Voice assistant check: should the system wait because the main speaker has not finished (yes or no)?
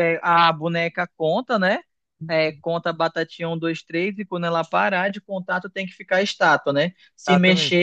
yes